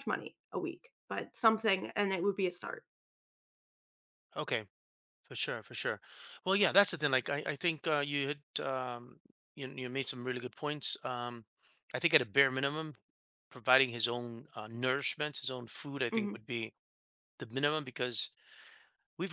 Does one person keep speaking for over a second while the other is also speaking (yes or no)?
no